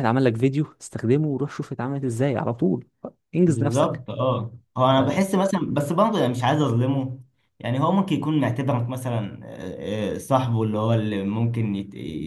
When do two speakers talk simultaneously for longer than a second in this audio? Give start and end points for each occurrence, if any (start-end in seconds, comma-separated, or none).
none